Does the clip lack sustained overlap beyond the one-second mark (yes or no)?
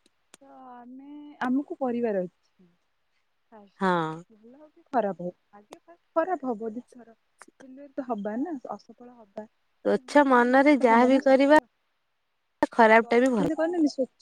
no